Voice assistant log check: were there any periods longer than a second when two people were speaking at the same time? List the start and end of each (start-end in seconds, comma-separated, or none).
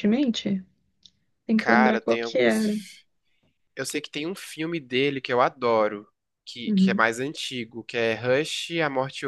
1.6-2.8